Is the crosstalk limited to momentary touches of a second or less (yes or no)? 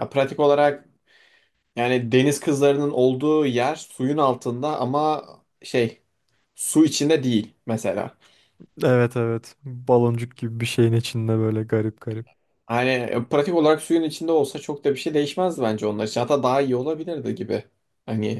yes